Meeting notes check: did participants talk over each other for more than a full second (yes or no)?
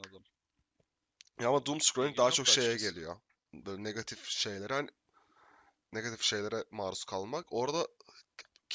yes